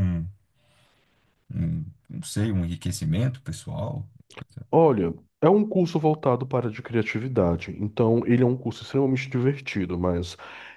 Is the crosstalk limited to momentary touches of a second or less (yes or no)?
yes